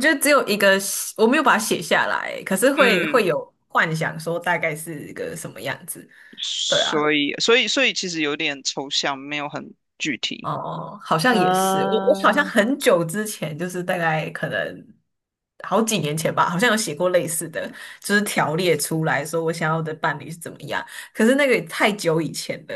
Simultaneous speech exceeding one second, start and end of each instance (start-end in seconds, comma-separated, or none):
11.3-12.5